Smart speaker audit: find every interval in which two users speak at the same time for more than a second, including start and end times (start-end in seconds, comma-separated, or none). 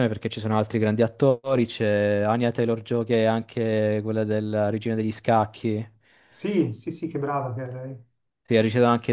none